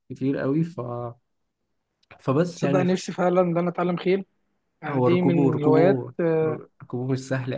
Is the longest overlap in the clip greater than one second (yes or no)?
yes